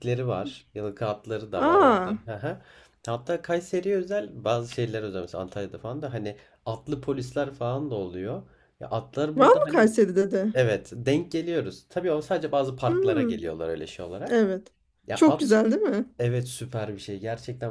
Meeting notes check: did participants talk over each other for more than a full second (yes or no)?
no